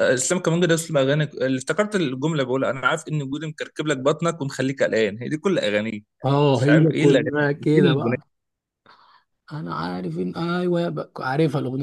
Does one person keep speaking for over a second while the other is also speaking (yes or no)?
yes